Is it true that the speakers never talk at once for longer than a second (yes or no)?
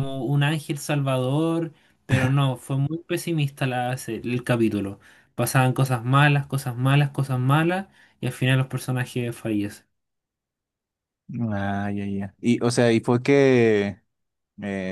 yes